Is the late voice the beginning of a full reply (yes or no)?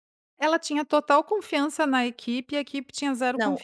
yes